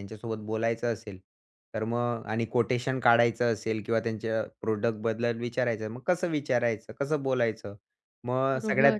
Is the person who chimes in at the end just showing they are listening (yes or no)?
yes